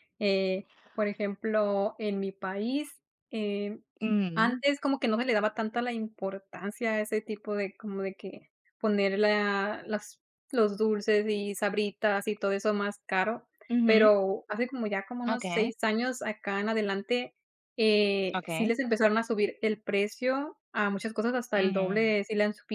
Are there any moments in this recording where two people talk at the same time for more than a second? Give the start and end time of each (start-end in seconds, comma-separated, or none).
none